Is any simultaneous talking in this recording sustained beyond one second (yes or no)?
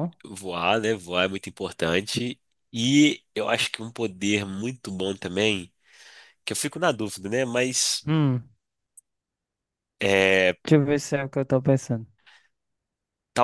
no